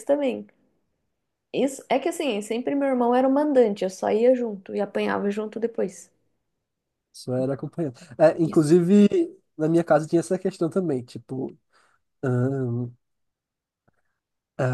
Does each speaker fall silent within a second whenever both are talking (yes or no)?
yes